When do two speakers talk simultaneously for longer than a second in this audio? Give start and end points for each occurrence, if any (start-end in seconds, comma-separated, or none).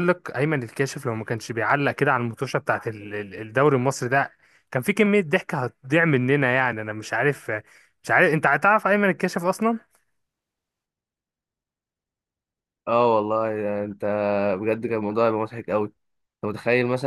none